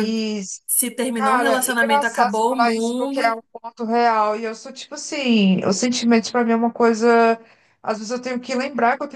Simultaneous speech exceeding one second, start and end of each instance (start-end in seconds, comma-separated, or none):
1.1-3.4